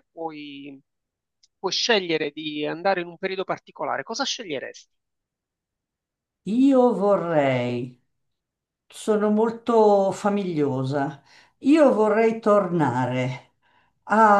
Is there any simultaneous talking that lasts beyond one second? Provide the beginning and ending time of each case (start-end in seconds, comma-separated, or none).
none